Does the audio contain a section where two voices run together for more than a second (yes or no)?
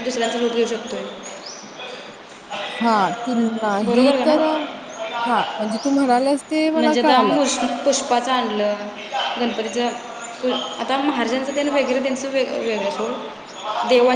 no